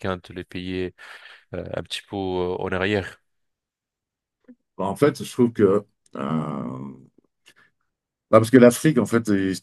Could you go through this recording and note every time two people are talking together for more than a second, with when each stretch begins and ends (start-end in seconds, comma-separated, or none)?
none